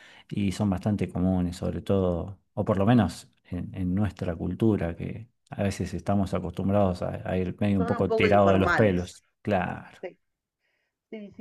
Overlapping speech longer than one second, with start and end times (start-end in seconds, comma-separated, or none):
7.8-9.2